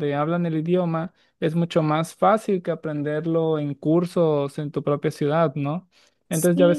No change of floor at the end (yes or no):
yes